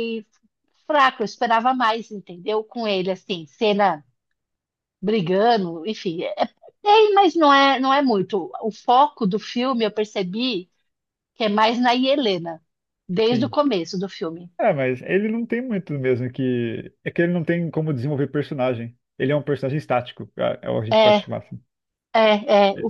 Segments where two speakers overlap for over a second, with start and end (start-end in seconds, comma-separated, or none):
none